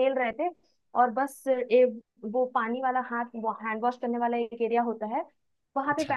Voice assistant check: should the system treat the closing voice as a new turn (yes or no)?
no